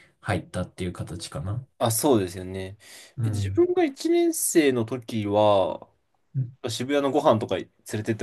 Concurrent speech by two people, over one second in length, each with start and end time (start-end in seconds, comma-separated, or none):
none